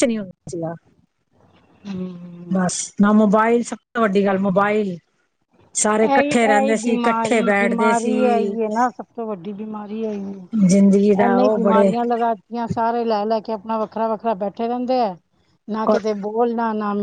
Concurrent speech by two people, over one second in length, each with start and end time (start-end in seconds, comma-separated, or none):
6.1-8.2, 10.7-11.9